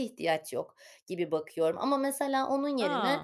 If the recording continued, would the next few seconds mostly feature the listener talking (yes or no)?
no